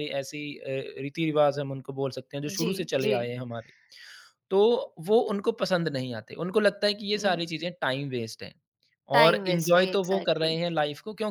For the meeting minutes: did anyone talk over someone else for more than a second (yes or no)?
yes